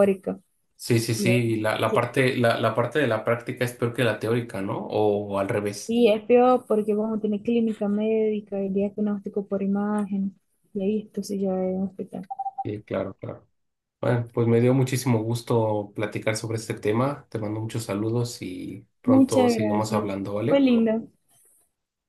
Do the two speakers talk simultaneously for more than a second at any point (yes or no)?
yes